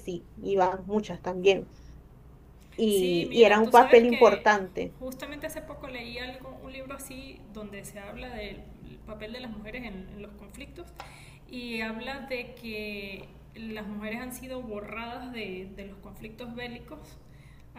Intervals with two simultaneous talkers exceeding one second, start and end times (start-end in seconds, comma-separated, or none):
2.9-4.5